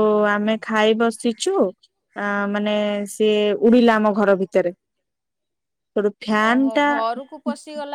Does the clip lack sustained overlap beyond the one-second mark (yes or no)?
yes